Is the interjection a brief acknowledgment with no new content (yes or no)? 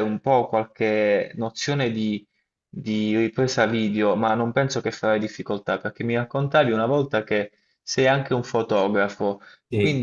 yes